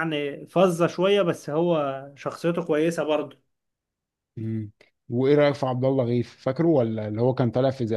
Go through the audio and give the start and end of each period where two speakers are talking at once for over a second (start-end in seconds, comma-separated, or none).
none